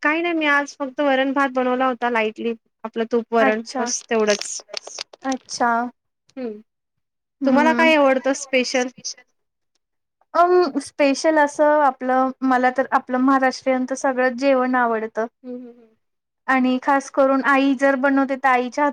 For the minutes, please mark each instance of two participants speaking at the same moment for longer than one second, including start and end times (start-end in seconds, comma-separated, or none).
none